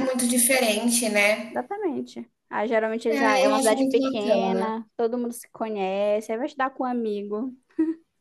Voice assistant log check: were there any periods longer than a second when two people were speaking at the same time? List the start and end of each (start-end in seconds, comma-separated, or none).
3.1-4.7